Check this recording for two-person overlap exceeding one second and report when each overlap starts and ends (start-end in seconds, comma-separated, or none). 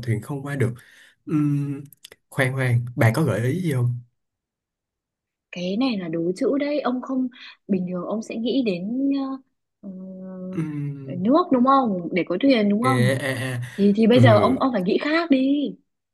none